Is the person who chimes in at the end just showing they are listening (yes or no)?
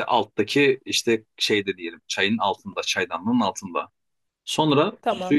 yes